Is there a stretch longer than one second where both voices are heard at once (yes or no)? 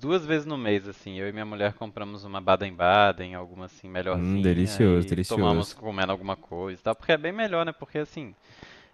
yes